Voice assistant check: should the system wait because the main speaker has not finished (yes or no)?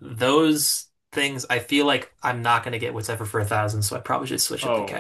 no